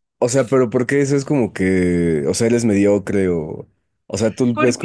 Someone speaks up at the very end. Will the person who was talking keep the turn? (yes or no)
yes